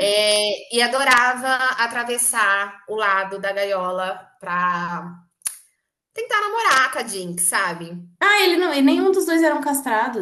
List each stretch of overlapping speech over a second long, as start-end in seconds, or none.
none